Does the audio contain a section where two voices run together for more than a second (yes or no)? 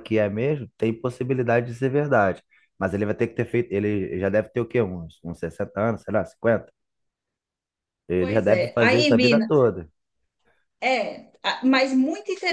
yes